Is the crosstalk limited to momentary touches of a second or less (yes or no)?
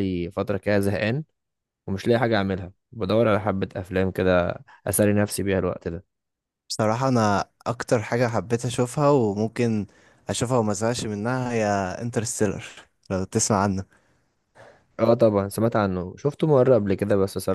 yes